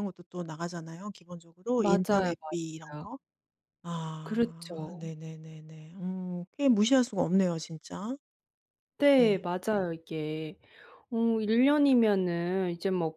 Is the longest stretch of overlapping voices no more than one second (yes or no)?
no